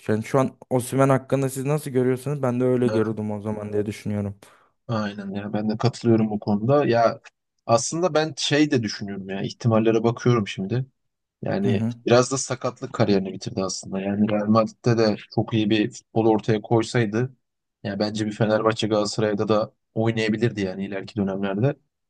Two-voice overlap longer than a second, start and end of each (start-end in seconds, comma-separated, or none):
none